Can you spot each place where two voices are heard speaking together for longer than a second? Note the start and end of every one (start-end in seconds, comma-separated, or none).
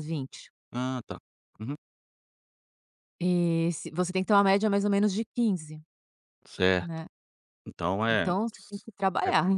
none